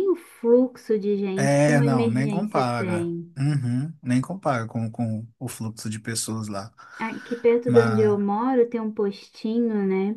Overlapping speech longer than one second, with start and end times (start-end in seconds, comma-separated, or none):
1.4-3.4